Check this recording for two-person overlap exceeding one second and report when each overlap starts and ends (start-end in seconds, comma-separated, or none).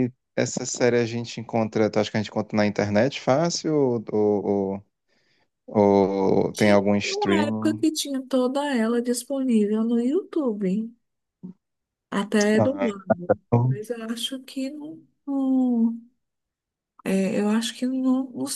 6.5-7.8